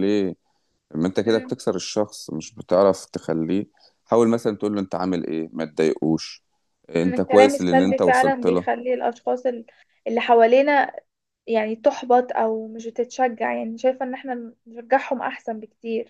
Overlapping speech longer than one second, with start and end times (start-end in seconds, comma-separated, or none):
7.0-8.7